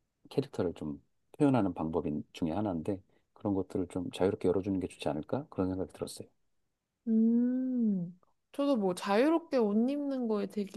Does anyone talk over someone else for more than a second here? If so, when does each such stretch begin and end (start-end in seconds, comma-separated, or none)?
none